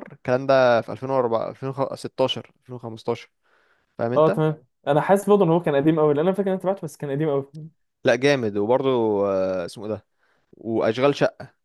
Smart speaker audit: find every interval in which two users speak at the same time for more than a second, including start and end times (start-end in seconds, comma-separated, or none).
none